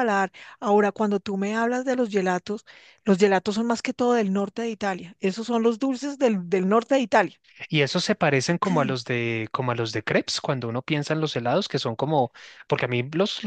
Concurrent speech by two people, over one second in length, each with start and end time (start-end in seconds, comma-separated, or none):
none